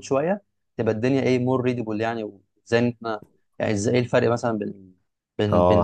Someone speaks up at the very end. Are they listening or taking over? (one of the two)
taking over